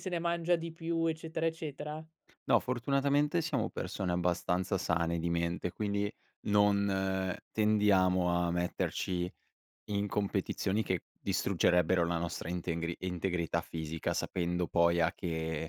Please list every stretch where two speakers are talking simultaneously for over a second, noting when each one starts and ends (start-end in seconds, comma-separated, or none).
none